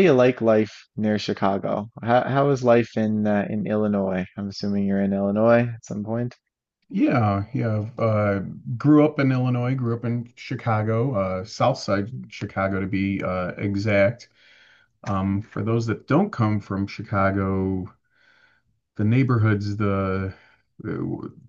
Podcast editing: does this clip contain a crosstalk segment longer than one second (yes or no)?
no